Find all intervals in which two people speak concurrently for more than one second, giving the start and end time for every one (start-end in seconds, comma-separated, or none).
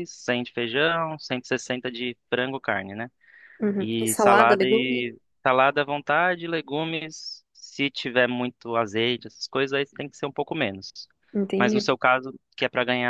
3.8-5.0